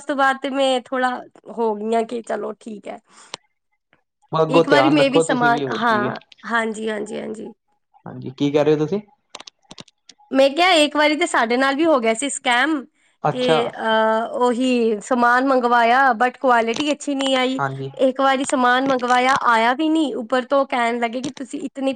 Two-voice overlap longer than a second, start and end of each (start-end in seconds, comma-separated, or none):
4.6-6.1